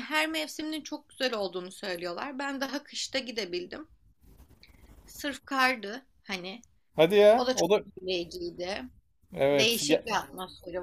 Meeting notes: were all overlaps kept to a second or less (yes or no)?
yes